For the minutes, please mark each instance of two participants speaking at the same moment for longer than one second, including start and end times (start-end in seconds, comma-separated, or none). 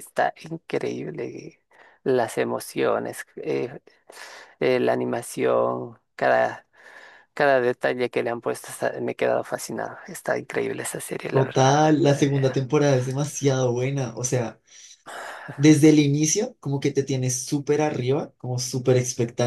11.3-12.7